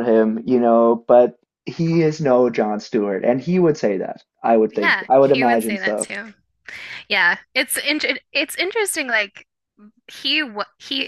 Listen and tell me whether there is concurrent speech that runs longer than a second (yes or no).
yes